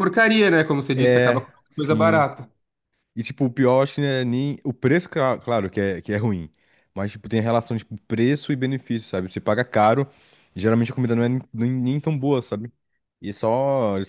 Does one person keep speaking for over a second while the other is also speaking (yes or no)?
yes